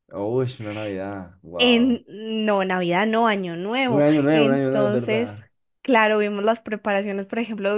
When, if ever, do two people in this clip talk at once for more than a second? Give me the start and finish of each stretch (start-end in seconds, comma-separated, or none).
3.9-5.3